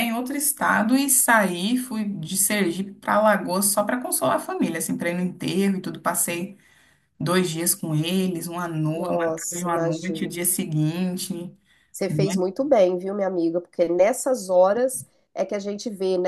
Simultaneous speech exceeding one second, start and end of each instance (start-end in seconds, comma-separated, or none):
8.9-10.4